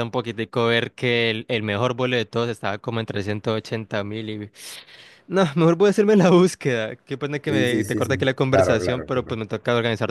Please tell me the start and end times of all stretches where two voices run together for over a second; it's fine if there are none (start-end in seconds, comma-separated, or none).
7.5-9.4